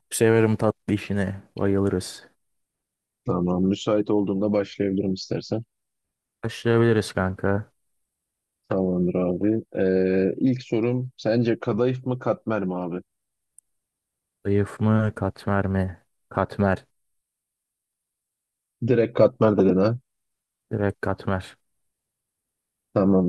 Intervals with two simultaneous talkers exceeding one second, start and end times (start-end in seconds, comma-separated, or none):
none